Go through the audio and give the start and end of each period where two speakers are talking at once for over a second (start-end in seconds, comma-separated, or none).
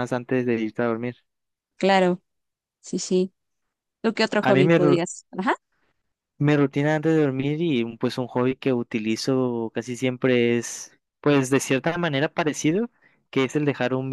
none